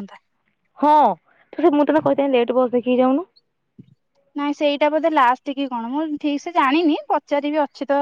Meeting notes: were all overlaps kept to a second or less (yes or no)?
yes